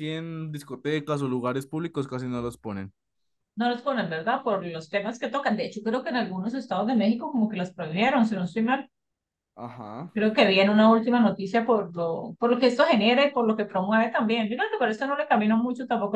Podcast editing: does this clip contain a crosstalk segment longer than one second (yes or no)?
no